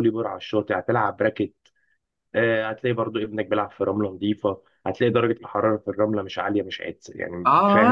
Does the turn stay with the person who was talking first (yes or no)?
no